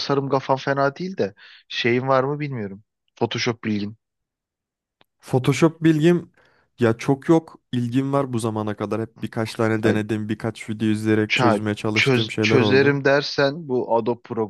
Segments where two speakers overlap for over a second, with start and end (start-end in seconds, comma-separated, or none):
11.3-13.0